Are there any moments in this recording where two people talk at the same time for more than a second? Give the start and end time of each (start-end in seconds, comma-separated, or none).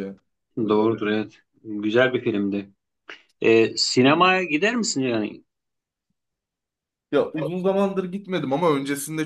none